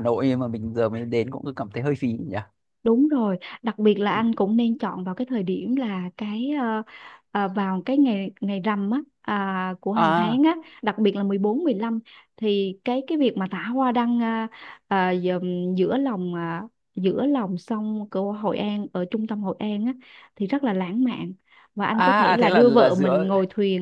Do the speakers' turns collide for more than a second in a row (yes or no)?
yes